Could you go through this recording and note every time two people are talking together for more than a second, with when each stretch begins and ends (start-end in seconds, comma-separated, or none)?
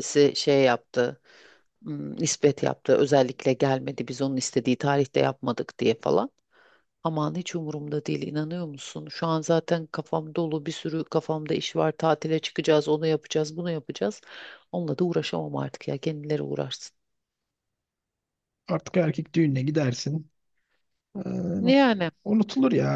none